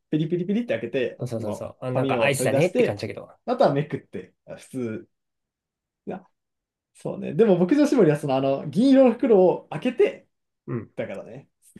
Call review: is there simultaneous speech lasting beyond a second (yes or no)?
yes